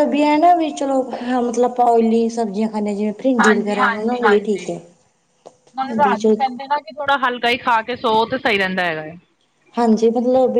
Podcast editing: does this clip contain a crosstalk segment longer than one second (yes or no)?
yes